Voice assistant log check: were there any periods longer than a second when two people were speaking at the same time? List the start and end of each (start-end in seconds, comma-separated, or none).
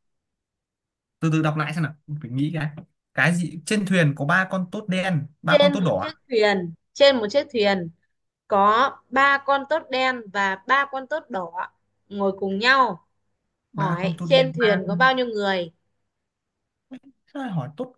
13.8-15.1